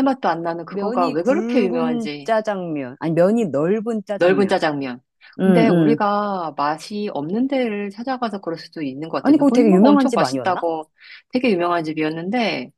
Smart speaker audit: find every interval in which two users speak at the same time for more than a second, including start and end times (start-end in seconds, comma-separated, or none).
0.7-2.3, 9.2-10.6